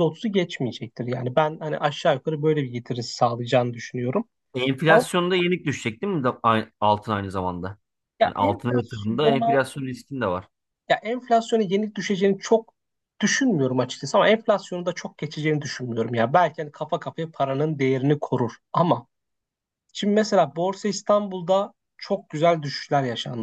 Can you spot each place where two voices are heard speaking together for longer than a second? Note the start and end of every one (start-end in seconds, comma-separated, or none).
8.2-9.5